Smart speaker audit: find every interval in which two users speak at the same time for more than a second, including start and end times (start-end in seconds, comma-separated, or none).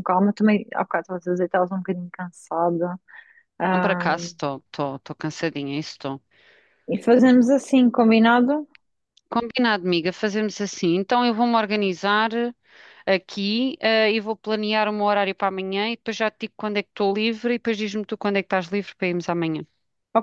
none